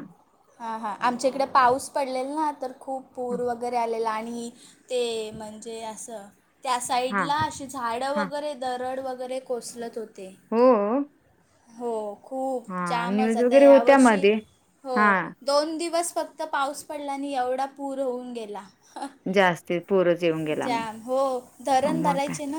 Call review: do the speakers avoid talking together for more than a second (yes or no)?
no